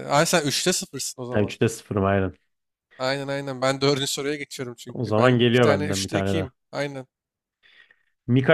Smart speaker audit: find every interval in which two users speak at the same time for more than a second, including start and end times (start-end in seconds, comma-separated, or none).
4.9-6.5